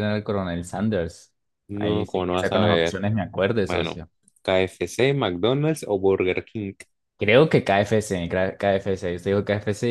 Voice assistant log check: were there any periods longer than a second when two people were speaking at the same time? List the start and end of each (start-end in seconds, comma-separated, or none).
1.7-3.0